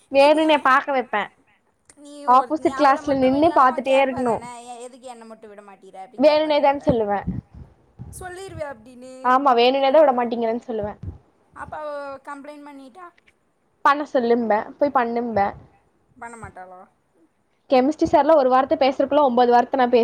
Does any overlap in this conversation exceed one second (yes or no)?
yes